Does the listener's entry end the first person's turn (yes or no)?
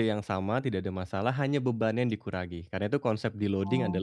no